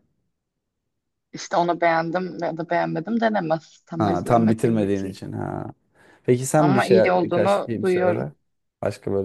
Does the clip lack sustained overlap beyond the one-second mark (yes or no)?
no